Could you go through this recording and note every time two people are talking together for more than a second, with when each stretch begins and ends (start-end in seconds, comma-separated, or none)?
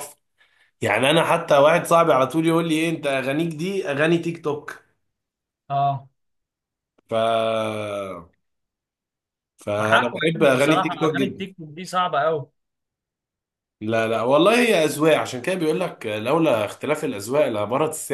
9.8-11.5